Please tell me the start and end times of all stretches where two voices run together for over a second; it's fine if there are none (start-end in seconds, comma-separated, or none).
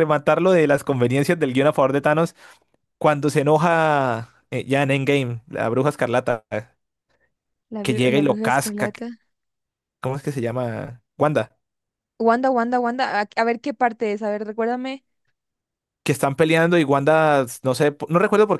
7.8-9.1